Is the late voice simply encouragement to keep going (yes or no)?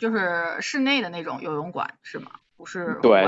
no